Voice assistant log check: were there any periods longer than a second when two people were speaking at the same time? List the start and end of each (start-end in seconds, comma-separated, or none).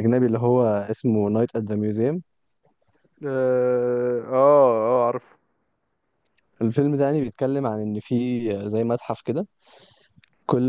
none